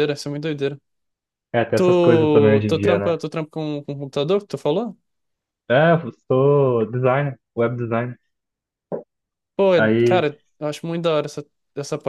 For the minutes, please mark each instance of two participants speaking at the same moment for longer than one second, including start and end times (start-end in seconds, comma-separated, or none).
1.8-3.2